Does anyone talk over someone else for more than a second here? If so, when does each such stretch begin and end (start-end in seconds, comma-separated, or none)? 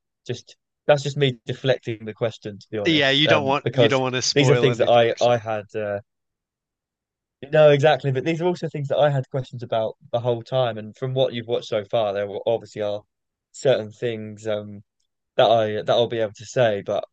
2.9-5.4